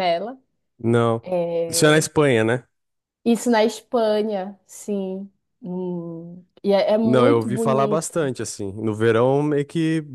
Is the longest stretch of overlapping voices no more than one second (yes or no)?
no